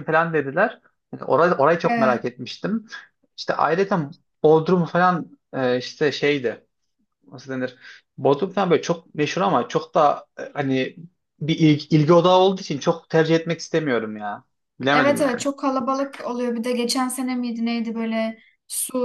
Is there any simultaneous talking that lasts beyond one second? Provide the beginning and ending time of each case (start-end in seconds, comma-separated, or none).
none